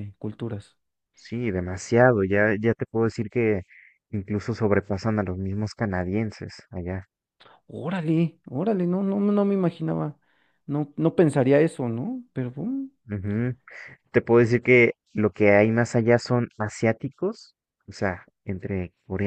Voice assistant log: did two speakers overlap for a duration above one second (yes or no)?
no